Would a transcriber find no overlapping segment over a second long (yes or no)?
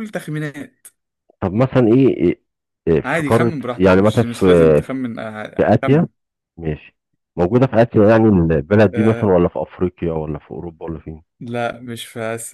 no